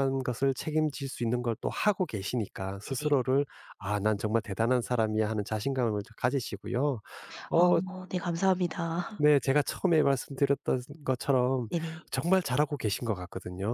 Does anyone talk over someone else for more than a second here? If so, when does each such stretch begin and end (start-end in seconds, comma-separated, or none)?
none